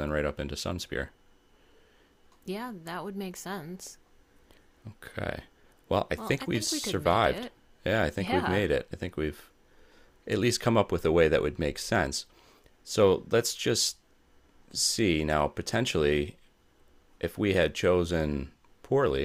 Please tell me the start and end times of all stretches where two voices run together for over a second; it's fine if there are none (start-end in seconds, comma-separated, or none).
6.1-7.5